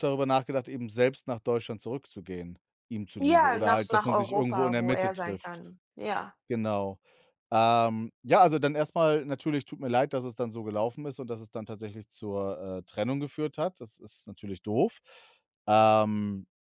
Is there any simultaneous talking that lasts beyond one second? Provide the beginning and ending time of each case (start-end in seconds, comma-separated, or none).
3.2-5.6